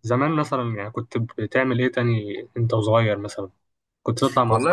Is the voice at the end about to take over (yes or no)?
yes